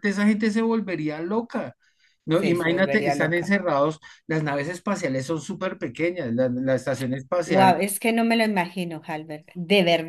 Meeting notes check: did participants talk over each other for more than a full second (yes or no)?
yes